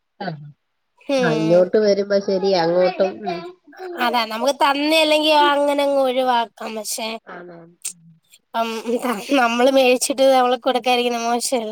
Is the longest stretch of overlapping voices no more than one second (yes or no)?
yes